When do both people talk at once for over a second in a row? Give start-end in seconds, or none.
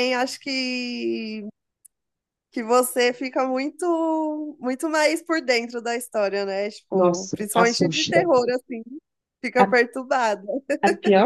6.9-8.2